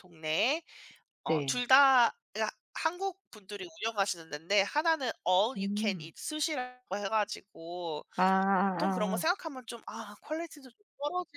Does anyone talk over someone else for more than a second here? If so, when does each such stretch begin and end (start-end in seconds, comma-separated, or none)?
none